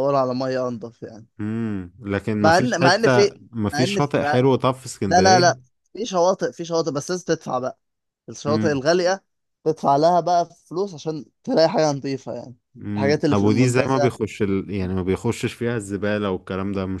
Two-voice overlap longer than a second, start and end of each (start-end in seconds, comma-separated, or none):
2.4-4.4, 13.0-14.2